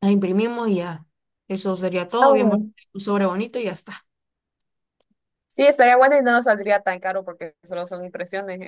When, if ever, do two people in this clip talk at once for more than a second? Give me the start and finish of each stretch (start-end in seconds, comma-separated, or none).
none